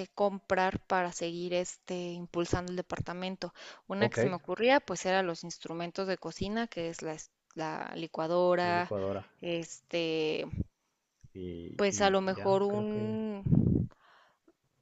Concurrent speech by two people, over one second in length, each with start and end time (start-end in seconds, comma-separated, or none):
11.8-13.2